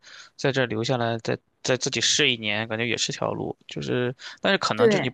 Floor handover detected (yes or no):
no